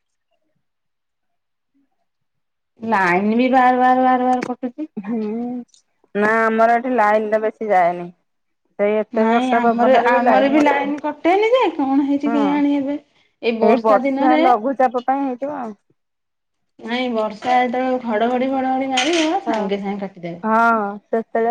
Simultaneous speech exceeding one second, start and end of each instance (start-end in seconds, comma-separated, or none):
9.2-10.9